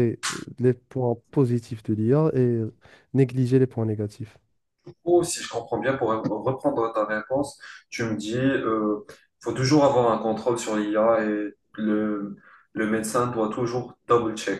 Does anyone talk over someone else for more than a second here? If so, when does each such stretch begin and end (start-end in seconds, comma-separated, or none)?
none